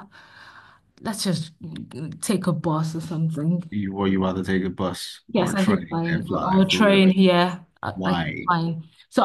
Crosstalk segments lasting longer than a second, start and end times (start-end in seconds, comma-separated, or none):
5.3-7.1